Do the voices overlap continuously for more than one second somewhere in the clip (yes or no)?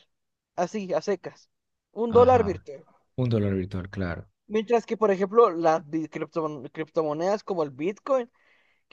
no